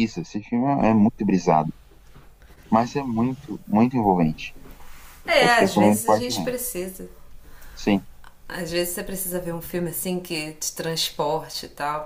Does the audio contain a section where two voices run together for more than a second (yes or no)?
yes